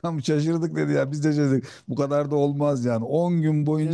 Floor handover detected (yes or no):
no